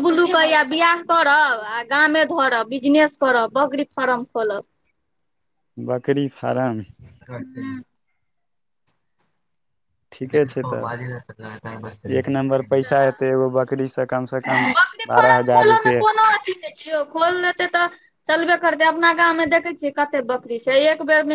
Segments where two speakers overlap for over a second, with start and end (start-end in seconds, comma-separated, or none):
11.3-13.1